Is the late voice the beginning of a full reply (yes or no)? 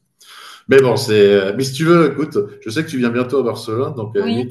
no